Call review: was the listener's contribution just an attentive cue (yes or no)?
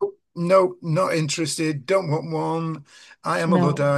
yes